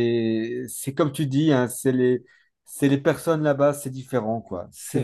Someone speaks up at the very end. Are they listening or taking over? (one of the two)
listening